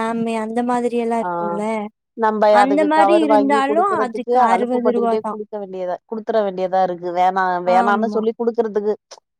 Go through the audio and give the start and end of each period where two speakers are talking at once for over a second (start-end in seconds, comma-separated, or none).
none